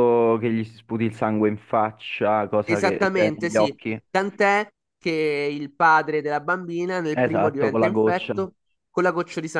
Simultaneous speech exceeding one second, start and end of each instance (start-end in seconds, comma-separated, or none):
2.6-4.0, 7.1-8.3